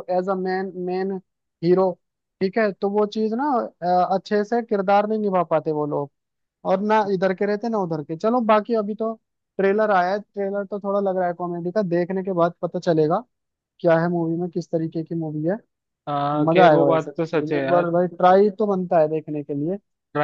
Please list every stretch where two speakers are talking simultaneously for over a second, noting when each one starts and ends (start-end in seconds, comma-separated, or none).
16.4-17.9